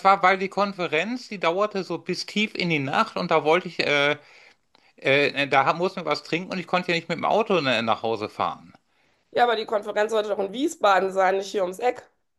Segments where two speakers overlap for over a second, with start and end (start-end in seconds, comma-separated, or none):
none